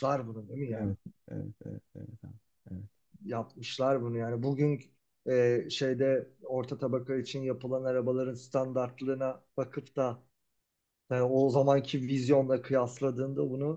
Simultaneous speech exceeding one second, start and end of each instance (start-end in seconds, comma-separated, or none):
none